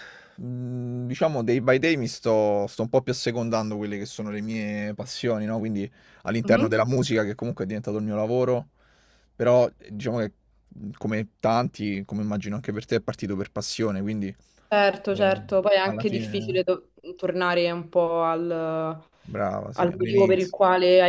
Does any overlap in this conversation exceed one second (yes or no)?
yes